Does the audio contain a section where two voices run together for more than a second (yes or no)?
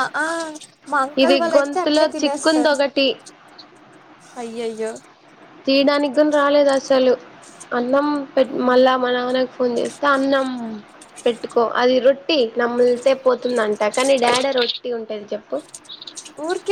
yes